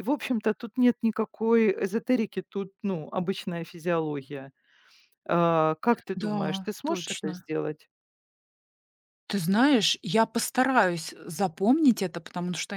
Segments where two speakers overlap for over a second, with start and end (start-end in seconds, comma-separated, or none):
6.1-7.5